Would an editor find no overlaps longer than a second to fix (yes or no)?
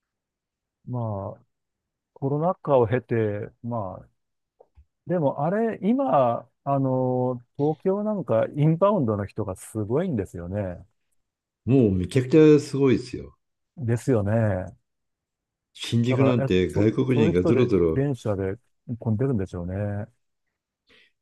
no